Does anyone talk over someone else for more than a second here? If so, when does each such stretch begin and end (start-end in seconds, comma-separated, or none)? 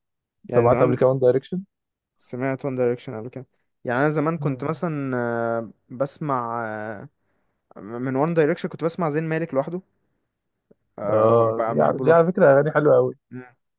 11.1-12.3